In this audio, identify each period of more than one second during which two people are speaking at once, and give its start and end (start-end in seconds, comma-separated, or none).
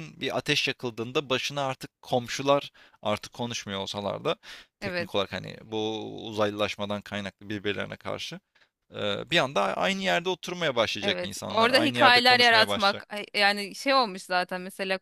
11.0-13.0